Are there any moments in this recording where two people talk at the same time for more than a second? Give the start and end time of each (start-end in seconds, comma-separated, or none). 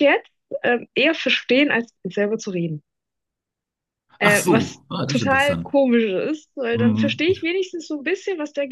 4.2-5.8